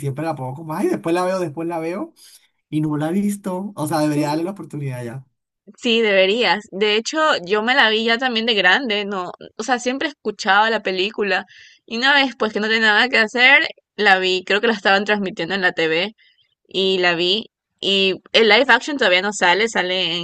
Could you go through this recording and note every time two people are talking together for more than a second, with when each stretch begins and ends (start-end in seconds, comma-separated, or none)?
none